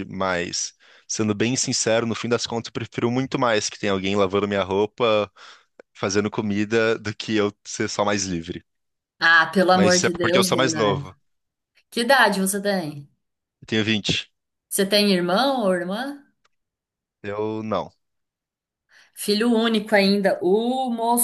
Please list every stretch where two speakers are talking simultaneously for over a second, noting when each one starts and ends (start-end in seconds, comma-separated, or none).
9.7-11.1